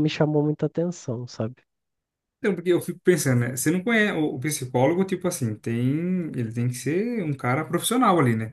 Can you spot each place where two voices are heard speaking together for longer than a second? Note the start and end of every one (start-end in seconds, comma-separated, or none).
none